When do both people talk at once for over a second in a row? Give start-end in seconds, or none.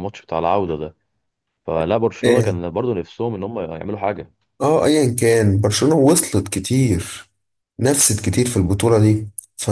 none